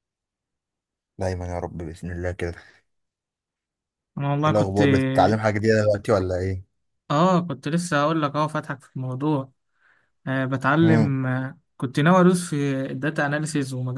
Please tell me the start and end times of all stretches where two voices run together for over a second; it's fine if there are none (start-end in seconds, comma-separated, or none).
none